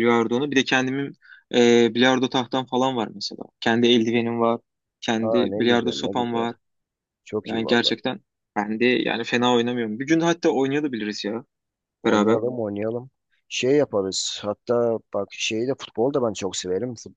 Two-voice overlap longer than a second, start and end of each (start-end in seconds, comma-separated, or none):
5.2-6.5